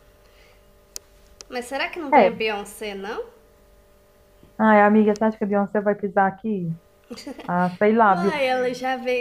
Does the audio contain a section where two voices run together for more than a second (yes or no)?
no